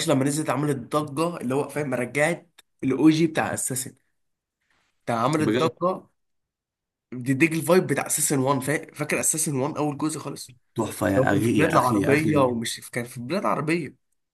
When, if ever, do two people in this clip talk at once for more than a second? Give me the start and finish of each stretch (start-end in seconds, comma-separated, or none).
11.2-12.4